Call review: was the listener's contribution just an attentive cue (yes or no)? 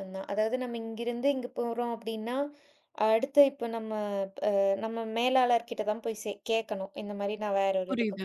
yes